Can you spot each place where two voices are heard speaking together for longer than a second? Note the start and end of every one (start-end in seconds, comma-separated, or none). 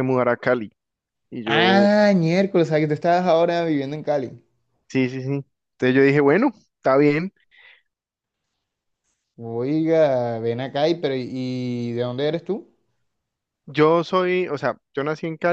none